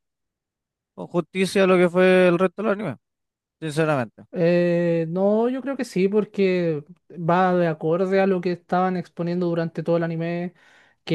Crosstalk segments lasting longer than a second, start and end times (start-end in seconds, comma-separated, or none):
none